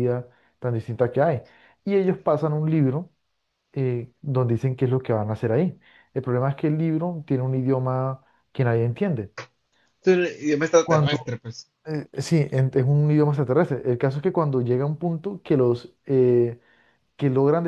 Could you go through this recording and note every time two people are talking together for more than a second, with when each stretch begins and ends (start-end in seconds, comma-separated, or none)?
none